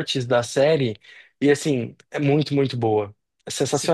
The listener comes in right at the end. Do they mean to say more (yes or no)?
yes